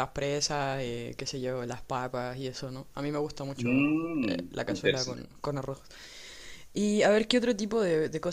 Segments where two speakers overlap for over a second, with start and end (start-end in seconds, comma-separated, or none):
3.6-5.2